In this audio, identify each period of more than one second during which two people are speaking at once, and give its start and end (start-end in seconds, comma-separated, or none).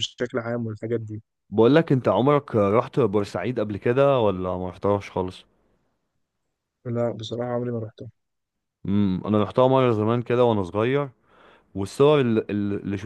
none